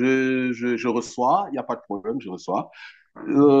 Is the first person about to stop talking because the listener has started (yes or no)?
no